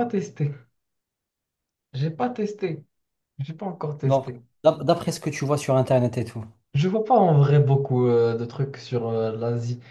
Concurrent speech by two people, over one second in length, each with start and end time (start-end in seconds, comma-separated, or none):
none